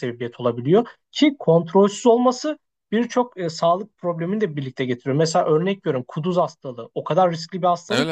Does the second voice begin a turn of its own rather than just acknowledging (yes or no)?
no